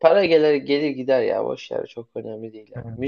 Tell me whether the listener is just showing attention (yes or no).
yes